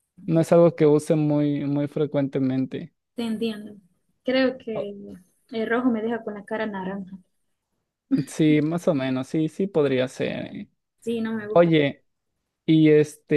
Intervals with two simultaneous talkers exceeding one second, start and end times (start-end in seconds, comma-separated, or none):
none